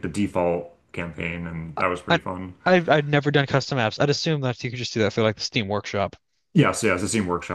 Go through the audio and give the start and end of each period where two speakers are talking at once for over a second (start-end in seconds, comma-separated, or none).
none